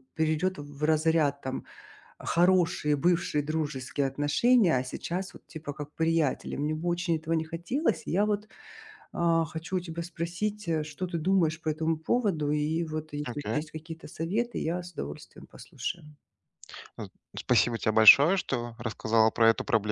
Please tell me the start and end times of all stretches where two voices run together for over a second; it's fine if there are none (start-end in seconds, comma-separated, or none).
none